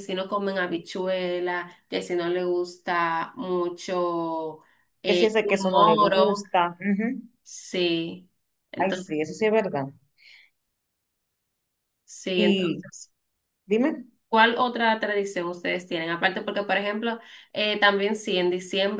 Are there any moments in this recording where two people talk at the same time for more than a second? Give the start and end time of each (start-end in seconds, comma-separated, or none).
5.0-6.5